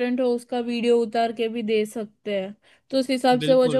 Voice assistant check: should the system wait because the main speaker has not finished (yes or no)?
yes